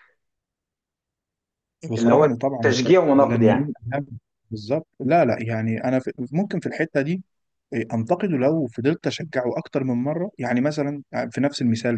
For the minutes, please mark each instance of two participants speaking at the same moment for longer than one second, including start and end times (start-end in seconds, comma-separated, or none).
2.0-3.7